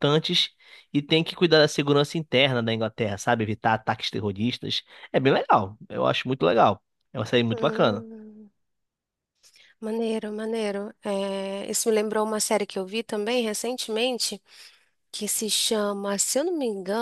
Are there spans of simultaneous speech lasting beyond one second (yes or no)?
no